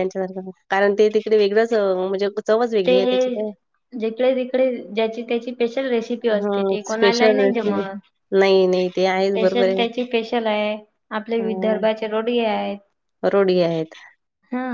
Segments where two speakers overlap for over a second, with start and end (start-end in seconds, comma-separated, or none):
6.4-7.8